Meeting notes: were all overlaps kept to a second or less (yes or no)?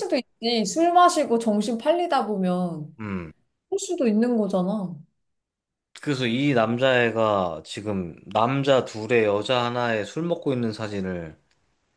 yes